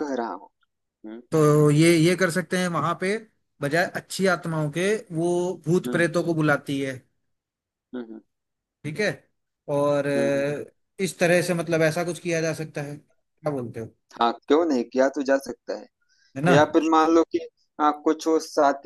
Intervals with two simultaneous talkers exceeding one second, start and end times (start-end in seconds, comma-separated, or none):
none